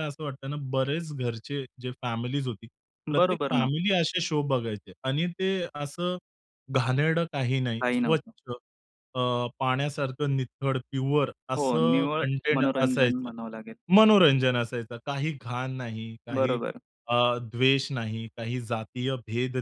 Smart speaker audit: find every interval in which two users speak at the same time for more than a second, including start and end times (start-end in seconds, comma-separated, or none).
11.6-13.3